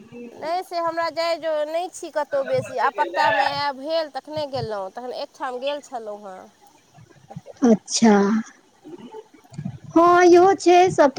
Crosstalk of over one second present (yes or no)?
no